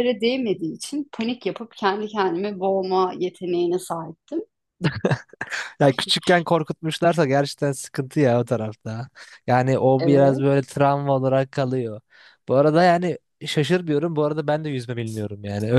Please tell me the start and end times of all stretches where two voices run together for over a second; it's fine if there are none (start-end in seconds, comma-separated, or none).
none